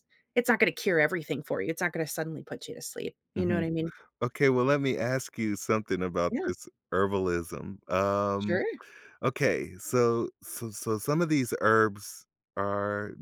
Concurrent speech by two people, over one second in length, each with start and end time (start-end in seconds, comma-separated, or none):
none